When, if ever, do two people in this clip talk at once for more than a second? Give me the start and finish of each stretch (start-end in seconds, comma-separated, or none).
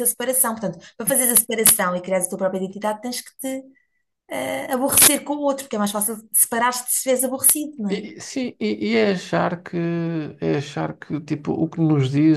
none